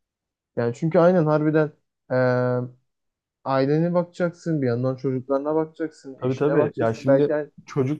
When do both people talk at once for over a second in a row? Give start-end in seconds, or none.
6.2-7.5